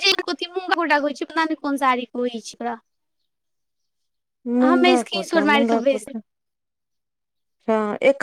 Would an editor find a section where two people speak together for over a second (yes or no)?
yes